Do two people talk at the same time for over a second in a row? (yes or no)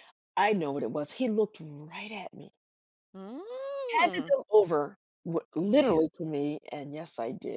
no